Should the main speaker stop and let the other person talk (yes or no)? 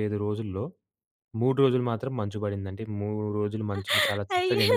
yes